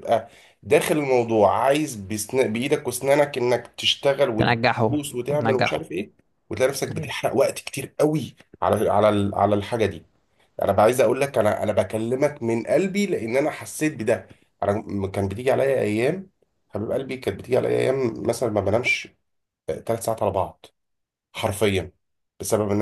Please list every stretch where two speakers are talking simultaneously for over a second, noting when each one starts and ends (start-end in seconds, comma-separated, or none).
4.4-5.9